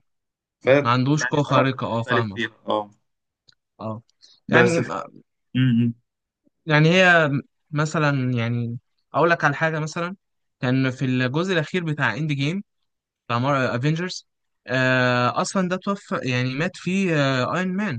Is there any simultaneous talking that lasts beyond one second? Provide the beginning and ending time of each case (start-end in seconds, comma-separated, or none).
0.8-2.4